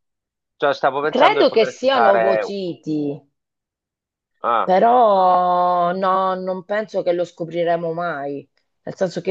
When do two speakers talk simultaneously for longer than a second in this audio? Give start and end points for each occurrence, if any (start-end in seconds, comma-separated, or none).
1.1-2.5